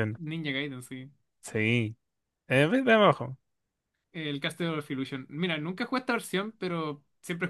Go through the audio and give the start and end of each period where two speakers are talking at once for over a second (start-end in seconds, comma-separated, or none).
none